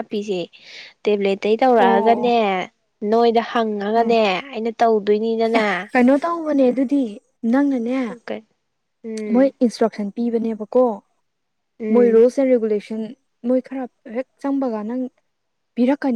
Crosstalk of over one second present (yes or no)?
no